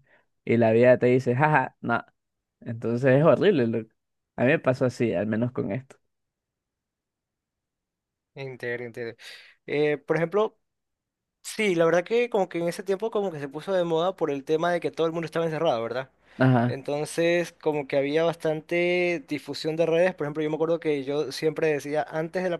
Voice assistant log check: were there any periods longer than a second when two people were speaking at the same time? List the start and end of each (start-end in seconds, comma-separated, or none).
none